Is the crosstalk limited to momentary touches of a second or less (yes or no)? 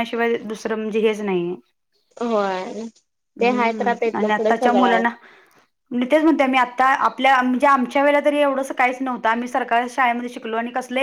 no